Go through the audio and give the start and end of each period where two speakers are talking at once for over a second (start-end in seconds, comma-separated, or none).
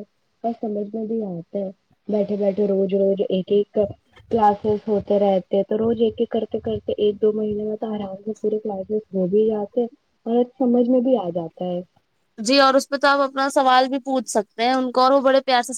none